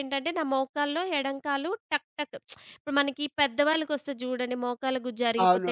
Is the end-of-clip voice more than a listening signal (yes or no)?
yes